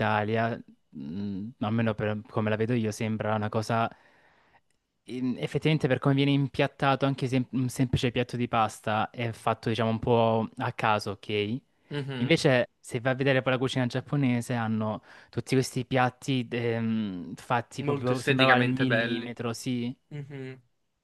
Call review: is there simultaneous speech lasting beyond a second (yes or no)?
yes